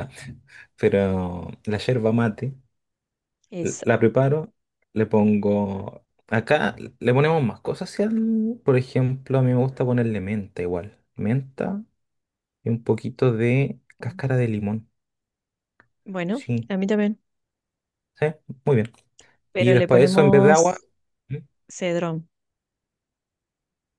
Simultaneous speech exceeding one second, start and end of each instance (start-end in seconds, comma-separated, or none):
19.6-20.8